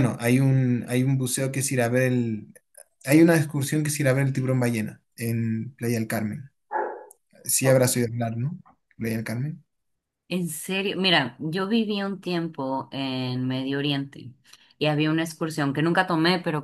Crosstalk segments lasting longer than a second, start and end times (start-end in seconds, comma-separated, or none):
none